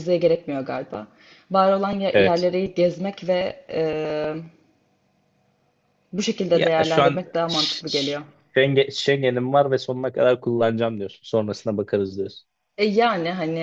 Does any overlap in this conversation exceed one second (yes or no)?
yes